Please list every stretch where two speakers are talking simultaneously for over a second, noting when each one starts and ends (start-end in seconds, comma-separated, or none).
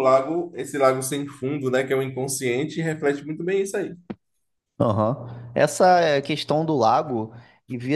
none